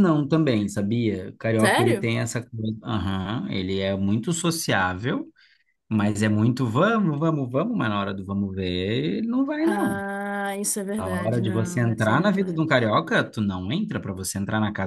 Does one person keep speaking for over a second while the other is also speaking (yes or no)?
yes